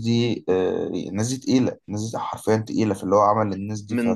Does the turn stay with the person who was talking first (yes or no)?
no